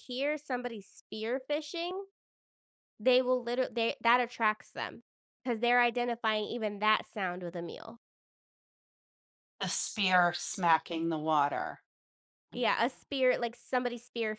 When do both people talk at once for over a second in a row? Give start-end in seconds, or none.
none